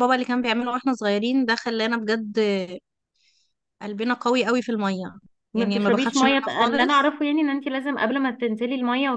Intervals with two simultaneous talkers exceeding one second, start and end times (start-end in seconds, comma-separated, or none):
5.5-7.1